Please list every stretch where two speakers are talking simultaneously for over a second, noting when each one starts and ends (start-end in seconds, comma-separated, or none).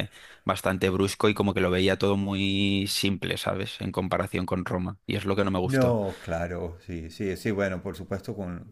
none